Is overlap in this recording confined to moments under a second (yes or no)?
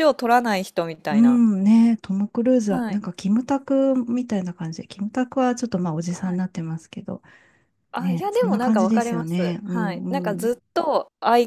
no